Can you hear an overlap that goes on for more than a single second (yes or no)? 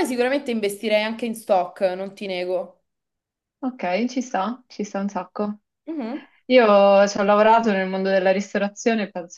no